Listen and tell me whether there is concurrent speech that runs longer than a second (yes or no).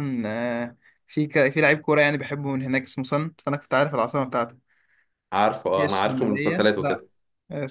yes